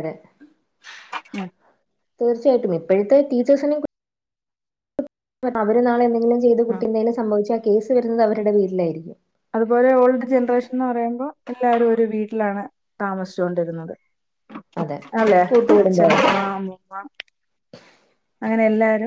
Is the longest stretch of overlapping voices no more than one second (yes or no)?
yes